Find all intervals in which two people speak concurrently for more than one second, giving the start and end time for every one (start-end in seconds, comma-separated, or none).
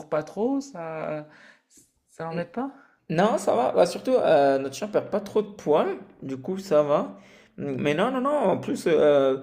none